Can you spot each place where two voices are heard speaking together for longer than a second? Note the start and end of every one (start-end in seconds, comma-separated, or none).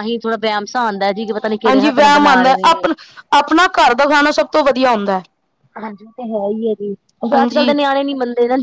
none